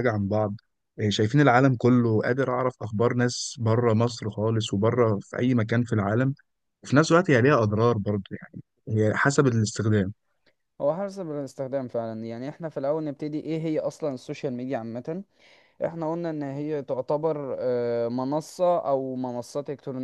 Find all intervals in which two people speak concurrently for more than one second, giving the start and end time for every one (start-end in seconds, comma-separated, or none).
none